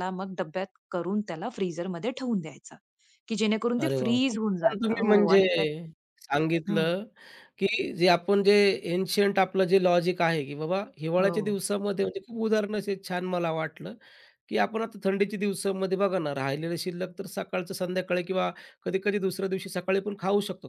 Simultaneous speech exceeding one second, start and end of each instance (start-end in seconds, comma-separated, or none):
3.8-5.4